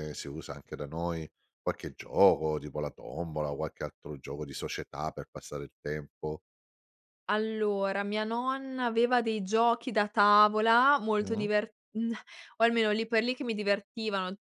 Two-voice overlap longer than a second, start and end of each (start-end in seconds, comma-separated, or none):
none